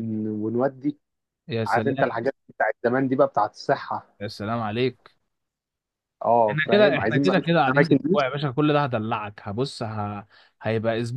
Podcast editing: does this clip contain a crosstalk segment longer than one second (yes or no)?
yes